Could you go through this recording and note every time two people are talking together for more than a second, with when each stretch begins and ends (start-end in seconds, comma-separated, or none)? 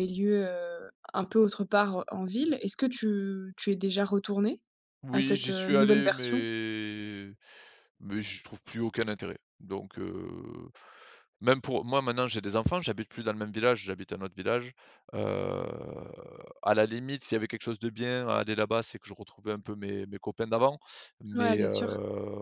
5.1-6.5